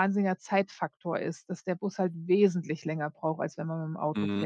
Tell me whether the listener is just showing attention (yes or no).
no